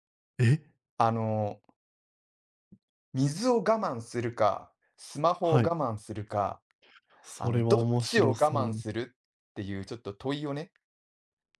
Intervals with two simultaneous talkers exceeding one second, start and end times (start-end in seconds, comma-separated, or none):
7.4-8.8